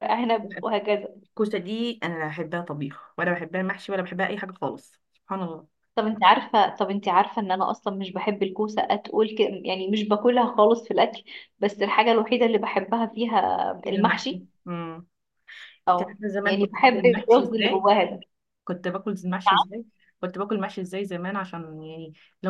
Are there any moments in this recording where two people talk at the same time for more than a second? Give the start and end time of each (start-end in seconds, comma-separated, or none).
16.0-17.9